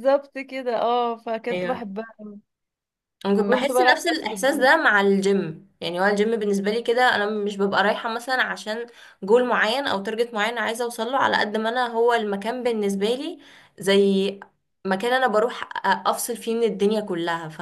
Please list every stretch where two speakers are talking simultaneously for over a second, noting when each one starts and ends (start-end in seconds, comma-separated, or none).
3.4-4.7